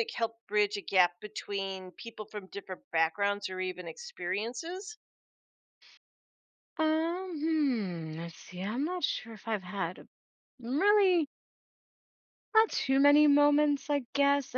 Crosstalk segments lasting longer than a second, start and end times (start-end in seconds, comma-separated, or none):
none